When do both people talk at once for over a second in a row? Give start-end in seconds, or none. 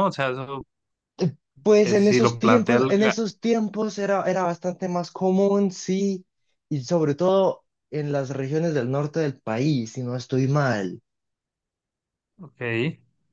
1.8-3.1